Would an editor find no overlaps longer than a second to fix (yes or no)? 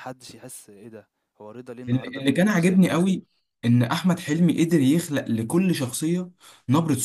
no